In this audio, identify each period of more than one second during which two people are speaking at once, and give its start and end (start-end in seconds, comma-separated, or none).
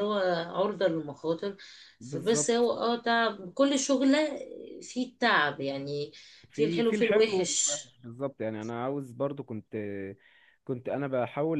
6.5-7.8